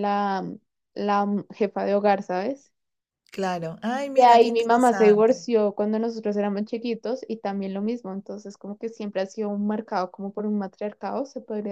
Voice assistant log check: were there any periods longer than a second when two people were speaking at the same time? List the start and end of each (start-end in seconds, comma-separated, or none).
4.1-5.4